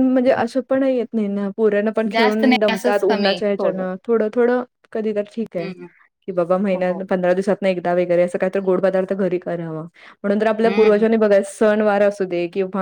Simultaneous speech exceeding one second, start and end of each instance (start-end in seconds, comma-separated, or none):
2.1-3.9